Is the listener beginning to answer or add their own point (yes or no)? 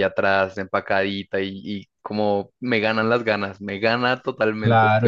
yes